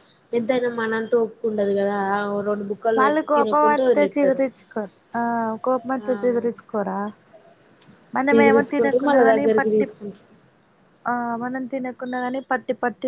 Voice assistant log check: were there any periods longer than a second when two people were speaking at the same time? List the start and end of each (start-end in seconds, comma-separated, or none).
8.3-9.9